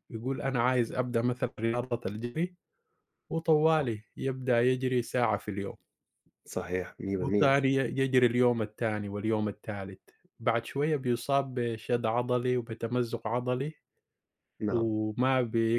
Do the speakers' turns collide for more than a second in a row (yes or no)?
no